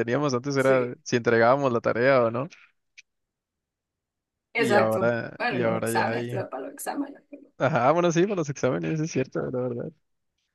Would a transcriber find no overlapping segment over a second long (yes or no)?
no